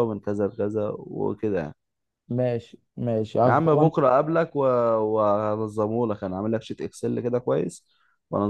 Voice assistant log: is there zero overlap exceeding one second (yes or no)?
yes